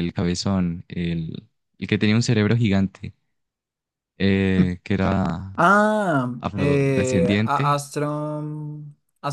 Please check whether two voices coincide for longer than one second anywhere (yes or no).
yes